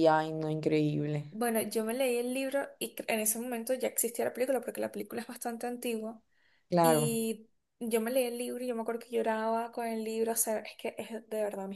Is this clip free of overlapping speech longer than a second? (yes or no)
yes